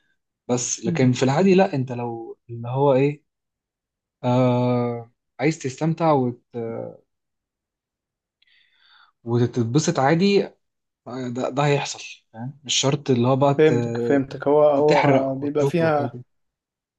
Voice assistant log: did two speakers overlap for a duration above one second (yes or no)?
yes